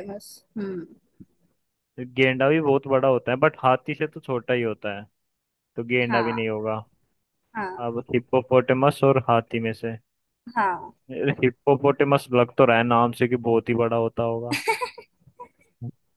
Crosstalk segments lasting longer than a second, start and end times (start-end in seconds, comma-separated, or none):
none